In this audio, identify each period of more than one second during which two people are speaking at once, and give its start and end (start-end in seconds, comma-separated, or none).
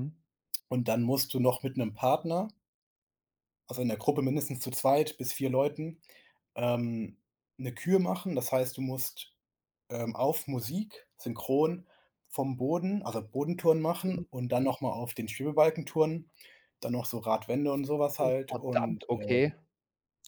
18.2-19.5